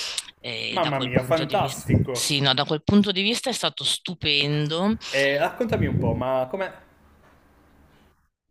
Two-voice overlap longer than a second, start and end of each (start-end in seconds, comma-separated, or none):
0.7-2.3